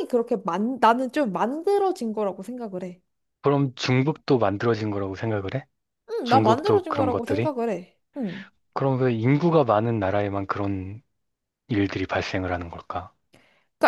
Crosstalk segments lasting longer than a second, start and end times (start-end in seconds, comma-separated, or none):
6.2-7.5